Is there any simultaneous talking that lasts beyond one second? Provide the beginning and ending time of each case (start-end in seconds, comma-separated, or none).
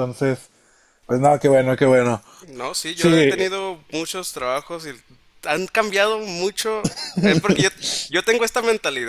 none